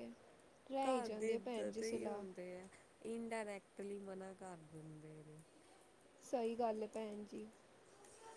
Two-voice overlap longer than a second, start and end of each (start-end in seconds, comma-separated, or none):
0.8-2.2